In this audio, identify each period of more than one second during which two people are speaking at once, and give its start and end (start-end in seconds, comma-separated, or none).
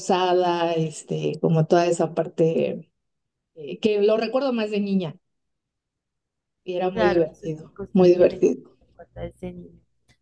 6.9-8.8